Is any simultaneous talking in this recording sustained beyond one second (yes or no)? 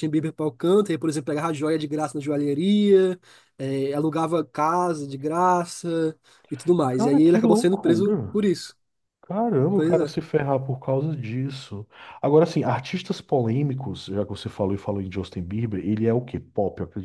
yes